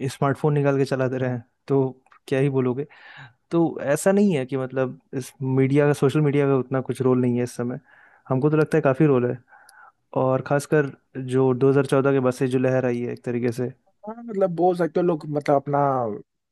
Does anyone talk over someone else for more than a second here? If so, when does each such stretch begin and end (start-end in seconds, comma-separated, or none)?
none